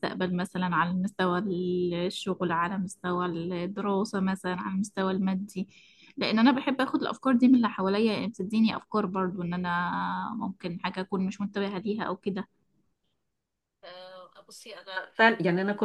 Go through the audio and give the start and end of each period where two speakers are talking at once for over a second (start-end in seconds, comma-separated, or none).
none